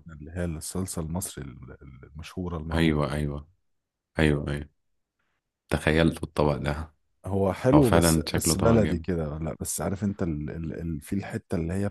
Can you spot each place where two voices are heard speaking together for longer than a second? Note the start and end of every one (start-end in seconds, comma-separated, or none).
7.7-9.1